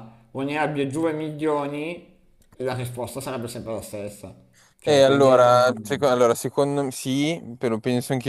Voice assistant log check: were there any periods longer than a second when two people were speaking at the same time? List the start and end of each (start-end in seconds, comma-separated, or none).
4.8-6.2